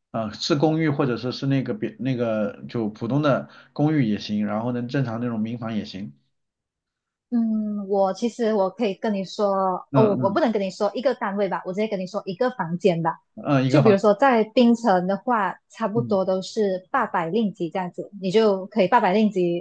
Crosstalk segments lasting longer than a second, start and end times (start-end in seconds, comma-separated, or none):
none